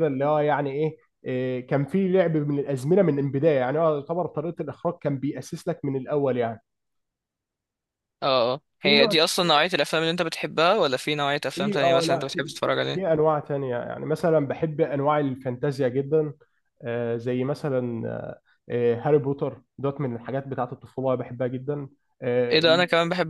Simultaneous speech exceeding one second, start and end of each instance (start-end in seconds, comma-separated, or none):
11.6-13.0